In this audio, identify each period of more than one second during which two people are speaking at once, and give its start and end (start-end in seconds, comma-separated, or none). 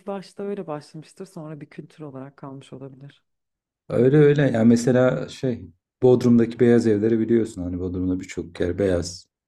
none